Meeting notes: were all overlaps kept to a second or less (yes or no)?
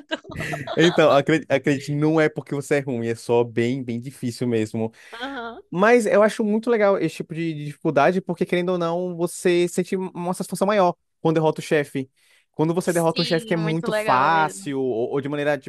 no